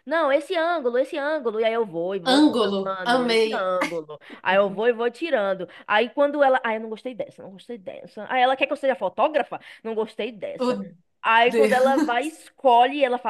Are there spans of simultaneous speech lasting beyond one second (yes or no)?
yes